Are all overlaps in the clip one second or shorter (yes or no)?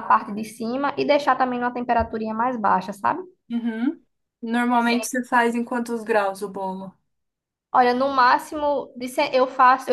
yes